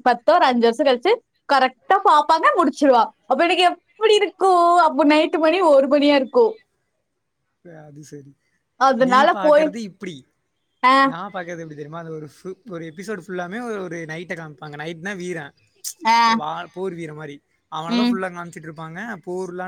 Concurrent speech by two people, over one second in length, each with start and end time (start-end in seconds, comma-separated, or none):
none